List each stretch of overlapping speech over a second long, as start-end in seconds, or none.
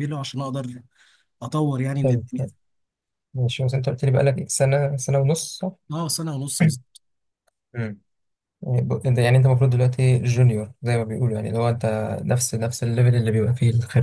none